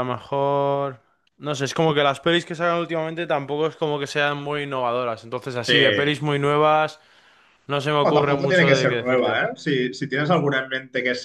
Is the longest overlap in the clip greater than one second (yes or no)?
yes